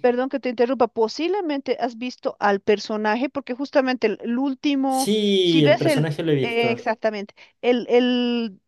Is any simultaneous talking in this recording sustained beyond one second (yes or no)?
yes